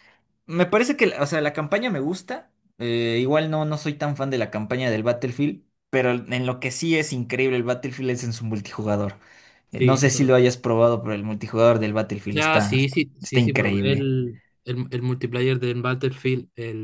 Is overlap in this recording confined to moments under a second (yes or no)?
no